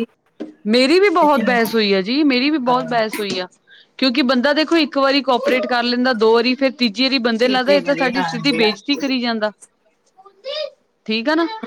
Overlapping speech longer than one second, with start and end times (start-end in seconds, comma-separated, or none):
7.4-9.1